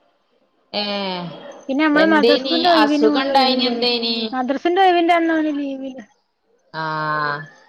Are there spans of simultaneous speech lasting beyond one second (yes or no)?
yes